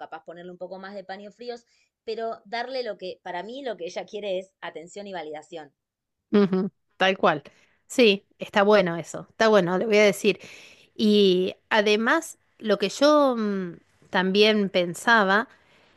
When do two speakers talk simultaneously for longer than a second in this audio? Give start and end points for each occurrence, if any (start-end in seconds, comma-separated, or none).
none